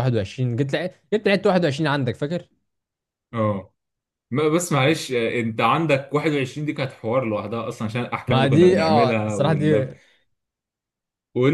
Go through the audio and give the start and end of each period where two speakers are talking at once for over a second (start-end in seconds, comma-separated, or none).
8.3-9.9